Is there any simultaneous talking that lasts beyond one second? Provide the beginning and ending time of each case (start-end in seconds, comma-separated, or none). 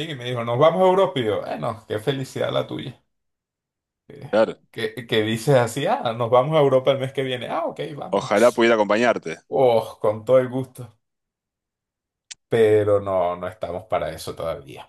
none